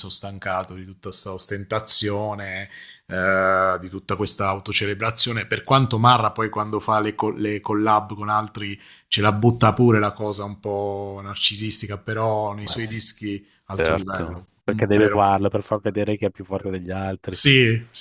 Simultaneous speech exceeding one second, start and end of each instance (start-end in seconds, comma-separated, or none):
13.7-15.3